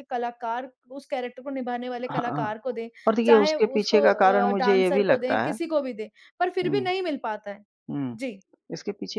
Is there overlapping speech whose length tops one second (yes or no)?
yes